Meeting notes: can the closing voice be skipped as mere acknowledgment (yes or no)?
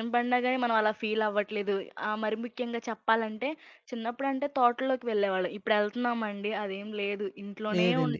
yes